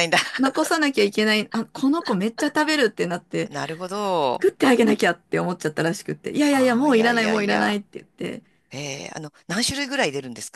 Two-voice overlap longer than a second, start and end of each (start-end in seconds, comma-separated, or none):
6.5-7.8